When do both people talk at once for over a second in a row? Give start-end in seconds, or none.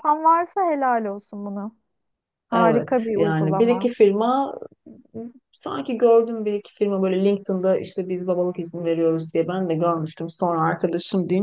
2.5-3.9